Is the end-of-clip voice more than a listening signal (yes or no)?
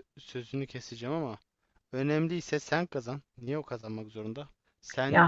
no